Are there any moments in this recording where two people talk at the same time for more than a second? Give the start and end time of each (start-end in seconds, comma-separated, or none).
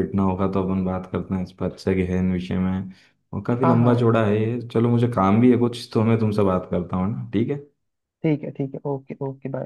none